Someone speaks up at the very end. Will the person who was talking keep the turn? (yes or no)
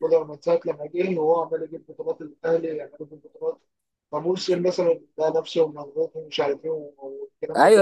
no